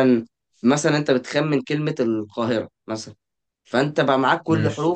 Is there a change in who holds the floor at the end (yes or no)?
no